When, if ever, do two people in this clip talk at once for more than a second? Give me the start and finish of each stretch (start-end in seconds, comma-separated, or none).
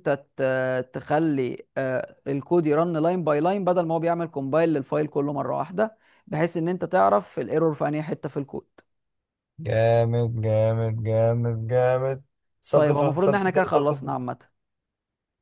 12.7-14.2